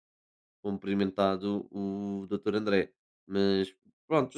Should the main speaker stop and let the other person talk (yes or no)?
no